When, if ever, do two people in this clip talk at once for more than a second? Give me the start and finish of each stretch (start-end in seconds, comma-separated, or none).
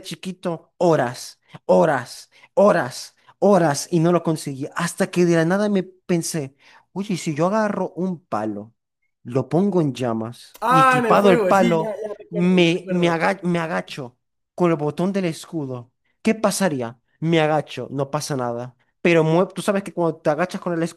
10.6-13.2